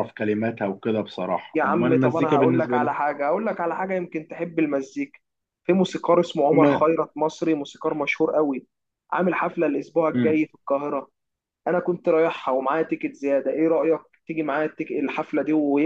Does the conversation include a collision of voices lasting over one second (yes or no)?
yes